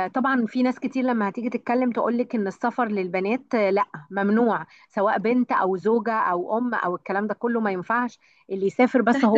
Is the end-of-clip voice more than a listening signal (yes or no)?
yes